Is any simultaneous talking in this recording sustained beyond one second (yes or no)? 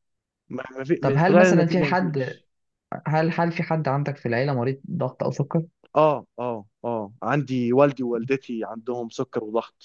yes